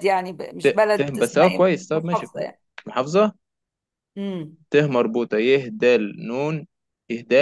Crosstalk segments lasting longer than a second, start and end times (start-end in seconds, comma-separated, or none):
0.6-2.5